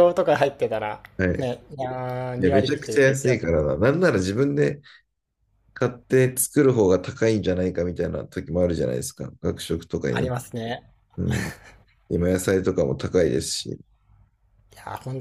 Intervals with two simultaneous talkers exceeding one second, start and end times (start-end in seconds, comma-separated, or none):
2.4-3.6